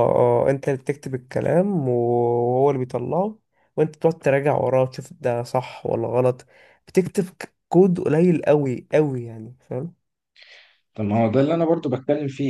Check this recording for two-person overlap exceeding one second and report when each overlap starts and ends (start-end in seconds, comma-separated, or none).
none